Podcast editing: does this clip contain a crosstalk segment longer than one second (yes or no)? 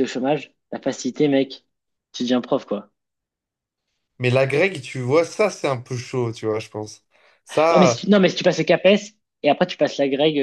no